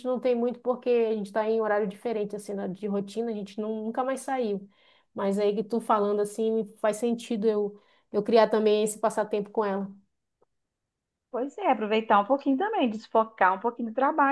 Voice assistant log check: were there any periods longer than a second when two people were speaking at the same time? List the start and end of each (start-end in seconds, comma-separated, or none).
none